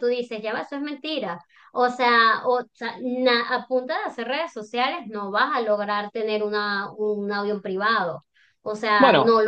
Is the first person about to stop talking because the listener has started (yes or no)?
no